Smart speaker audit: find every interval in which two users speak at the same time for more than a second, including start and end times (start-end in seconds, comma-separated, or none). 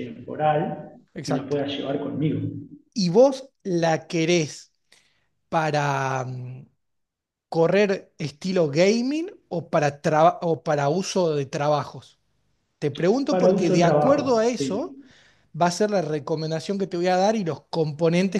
13.3-15.0